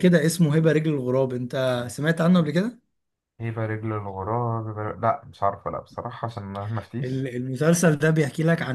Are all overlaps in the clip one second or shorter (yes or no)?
yes